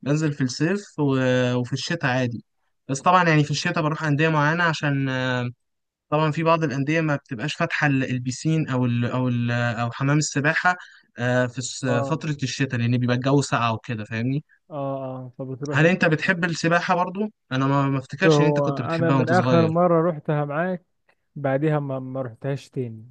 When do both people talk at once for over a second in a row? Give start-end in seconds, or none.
18.3-19.7